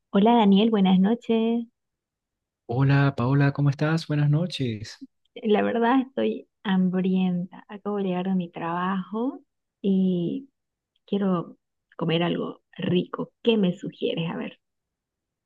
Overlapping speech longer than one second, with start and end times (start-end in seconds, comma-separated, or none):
none